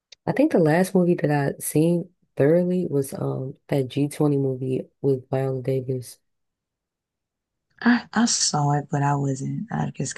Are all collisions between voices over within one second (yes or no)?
yes